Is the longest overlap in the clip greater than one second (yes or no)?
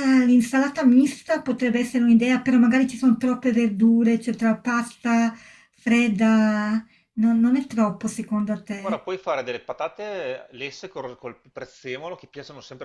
no